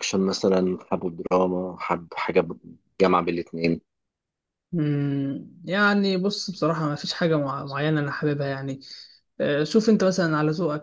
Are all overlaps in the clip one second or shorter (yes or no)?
yes